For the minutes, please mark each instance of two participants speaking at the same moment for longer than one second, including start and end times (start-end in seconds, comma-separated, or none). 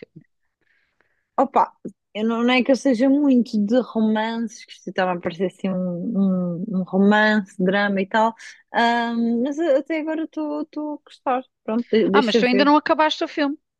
none